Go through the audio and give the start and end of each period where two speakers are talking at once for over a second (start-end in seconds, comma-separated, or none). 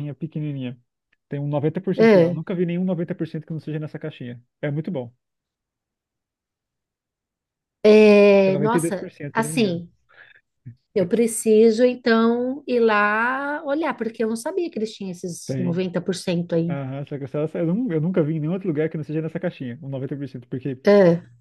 8.3-9.8